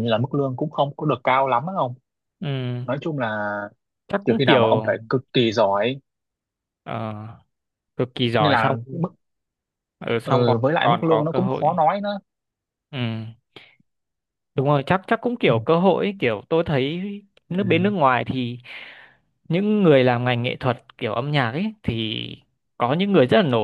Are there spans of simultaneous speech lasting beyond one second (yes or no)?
yes